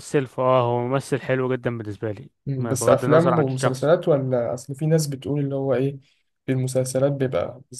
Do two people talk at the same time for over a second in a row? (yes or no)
yes